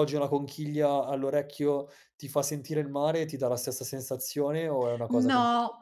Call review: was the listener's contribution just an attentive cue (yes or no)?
no